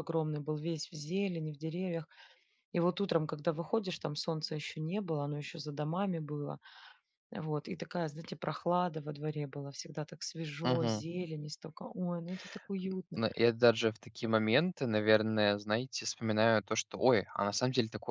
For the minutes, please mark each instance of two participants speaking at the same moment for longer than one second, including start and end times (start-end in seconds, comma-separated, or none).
none